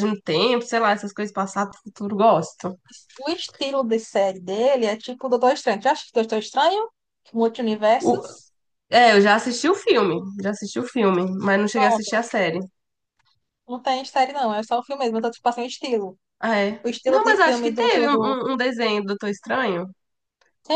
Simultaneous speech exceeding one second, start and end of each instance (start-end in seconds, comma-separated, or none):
16.8-18.4